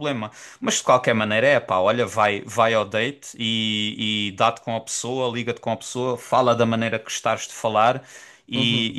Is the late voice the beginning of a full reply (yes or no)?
no